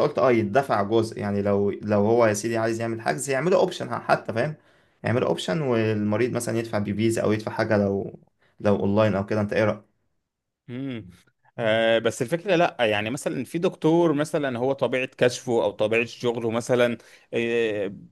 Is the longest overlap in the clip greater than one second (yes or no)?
no